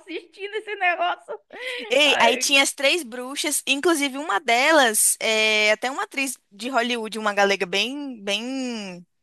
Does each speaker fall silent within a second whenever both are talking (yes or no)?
yes